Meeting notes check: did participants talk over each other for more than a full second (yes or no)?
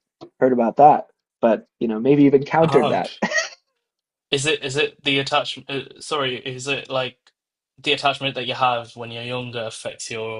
no